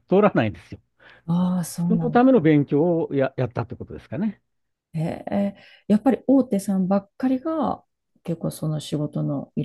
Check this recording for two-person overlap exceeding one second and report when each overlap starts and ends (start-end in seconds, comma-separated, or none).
none